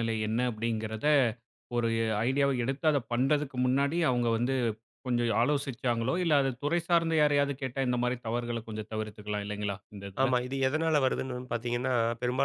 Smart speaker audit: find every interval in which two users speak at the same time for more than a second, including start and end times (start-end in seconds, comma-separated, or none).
none